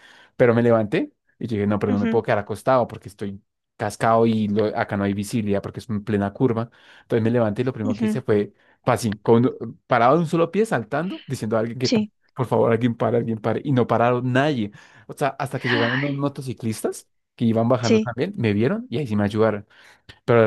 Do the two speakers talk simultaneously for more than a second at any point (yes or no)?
no